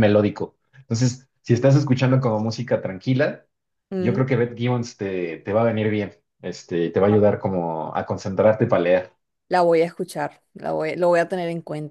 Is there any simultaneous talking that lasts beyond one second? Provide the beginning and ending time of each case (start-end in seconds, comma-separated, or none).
none